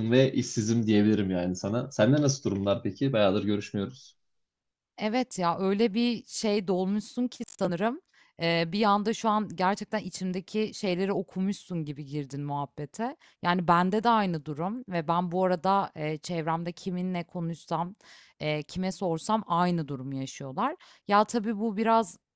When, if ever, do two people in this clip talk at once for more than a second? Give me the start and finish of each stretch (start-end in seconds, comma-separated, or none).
none